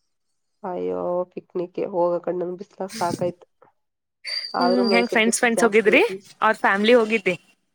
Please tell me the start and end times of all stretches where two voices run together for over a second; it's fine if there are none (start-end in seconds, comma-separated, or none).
4.6-6.0